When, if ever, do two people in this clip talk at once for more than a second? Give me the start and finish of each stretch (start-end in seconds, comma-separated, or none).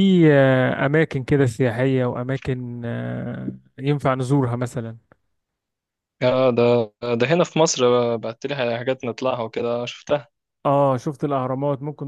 none